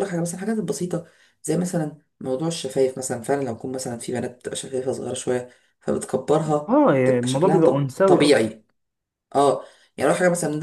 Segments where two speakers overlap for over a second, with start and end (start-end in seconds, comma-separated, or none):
6.7-8.5